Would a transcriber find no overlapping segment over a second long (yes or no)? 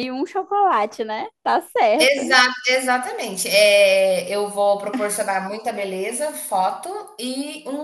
yes